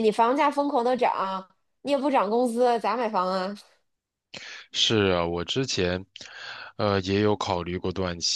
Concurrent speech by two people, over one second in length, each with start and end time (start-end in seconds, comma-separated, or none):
none